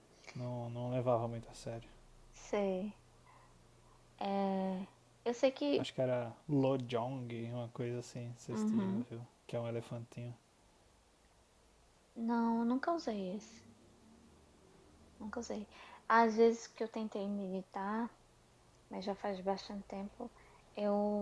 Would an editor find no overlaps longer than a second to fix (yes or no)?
yes